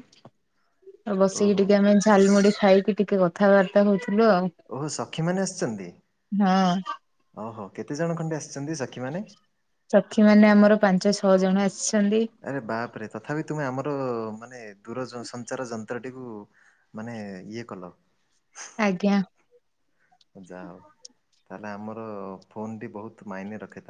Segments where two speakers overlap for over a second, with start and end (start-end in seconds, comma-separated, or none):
none